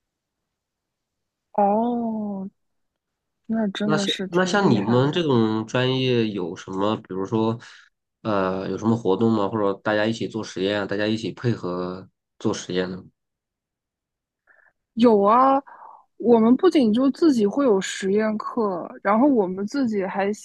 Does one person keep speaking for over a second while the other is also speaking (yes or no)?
yes